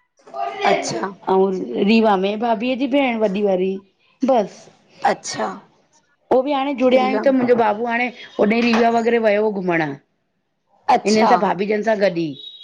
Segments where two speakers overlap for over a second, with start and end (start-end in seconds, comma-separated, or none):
none